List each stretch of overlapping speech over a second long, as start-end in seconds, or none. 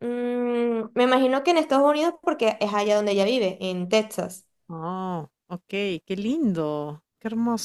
none